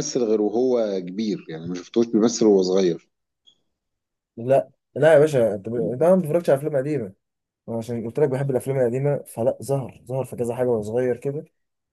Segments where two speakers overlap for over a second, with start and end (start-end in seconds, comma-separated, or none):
none